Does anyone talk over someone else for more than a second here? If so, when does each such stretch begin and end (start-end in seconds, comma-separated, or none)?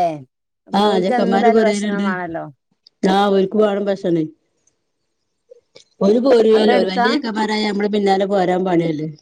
0.9-2.1